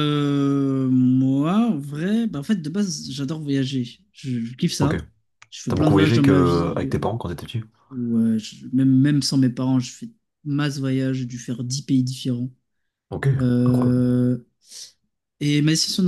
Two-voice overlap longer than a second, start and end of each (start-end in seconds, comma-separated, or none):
5.7-7.0